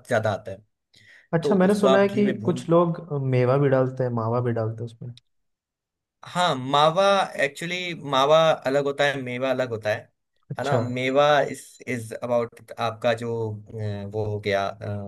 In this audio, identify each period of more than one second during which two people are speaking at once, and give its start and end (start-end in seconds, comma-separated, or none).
1.4-2.7